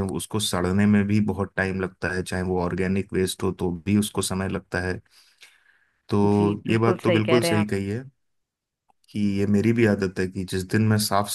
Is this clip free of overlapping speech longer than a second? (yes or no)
no